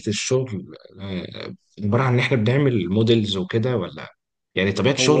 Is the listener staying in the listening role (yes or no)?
yes